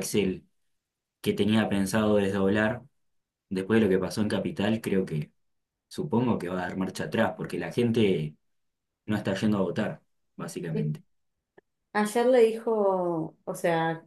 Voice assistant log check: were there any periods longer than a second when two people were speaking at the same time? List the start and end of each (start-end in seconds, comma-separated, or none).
none